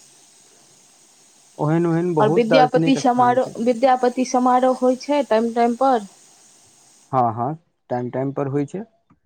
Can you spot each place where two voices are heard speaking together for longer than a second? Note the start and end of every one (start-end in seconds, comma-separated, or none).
2.2-3.5